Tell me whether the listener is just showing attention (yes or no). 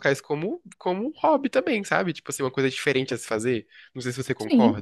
no